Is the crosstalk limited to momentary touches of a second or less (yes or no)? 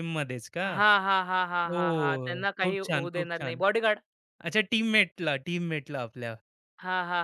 no